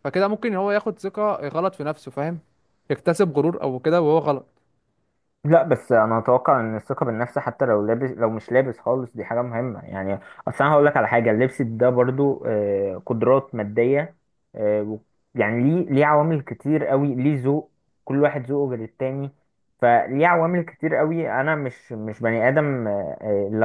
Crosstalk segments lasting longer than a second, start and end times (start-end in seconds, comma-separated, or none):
none